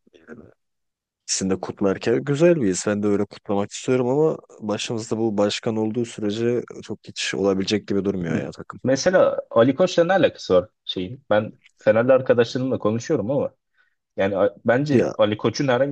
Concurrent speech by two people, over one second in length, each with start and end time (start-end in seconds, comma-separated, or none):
none